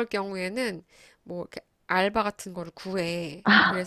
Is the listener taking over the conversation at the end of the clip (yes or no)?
no